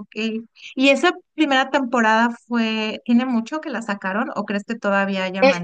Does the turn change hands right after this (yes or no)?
yes